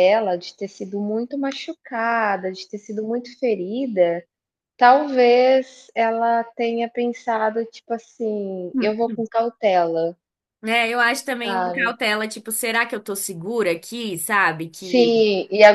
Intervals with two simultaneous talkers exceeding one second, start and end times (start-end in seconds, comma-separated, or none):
none